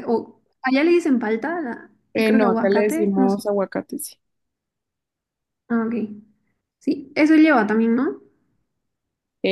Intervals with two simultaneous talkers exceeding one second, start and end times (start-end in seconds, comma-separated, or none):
2.1-3.4